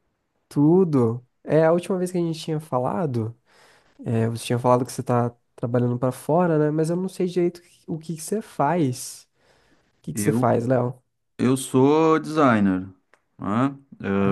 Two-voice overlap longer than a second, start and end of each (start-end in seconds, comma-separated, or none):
none